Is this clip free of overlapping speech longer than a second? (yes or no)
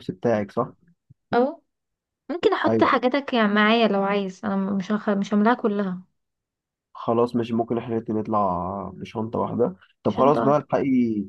yes